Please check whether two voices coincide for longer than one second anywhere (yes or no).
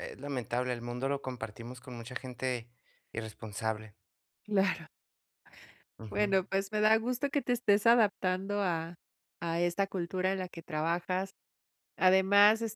no